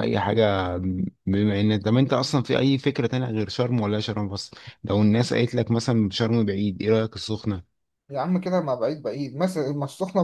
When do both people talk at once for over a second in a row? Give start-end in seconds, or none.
none